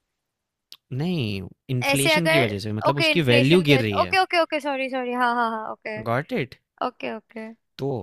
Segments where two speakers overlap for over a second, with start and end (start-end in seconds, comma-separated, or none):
1.9-4.2